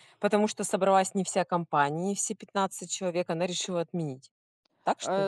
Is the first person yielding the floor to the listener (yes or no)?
yes